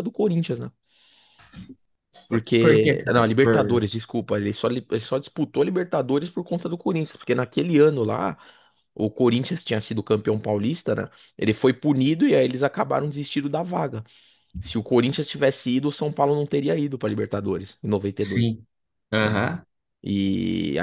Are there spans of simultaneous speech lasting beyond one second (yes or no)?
yes